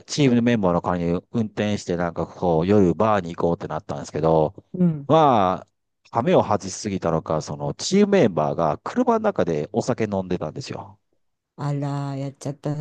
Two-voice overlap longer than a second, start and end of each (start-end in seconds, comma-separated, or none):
none